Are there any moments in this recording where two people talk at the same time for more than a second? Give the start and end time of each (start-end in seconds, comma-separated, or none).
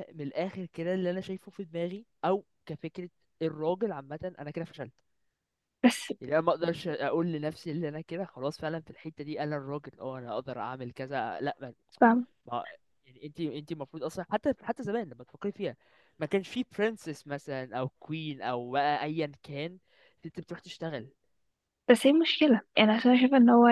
none